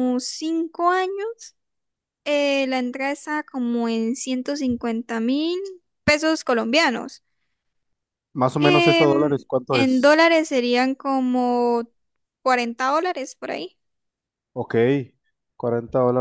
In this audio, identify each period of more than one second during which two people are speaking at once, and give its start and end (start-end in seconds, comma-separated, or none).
8.6-10.2